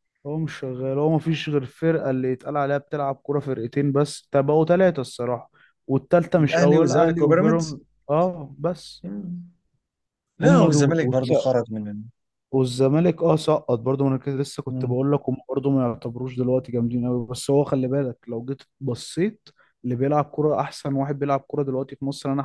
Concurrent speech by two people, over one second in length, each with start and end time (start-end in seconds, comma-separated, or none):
6.4-7.8